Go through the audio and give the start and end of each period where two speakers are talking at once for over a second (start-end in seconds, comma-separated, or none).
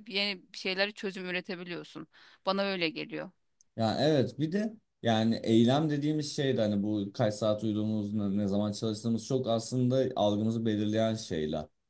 none